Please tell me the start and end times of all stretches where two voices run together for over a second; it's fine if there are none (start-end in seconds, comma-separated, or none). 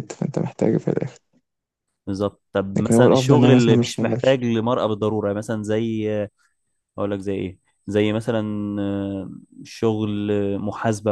2.8-4.4